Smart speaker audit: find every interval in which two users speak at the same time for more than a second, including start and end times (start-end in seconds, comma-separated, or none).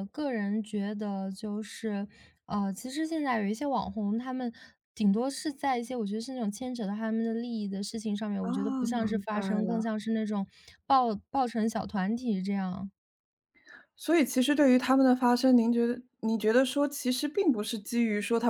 8.4-9.8